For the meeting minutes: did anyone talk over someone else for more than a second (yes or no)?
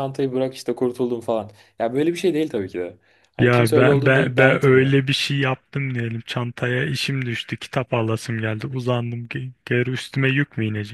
yes